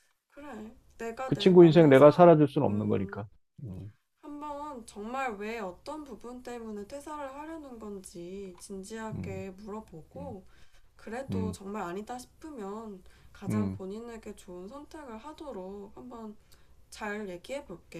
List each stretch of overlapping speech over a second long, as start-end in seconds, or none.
1.3-3.2